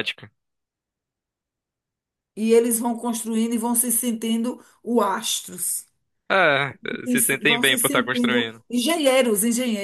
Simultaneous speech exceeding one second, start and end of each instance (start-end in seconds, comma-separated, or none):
7.0-8.6